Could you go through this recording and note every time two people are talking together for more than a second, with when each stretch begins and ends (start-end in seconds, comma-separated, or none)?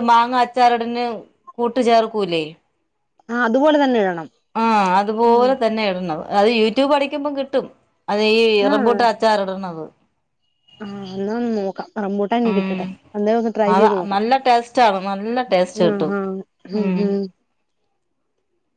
none